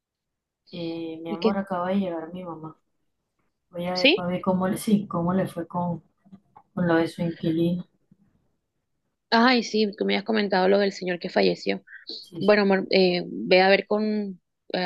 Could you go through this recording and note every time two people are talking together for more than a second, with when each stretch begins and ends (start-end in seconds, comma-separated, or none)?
none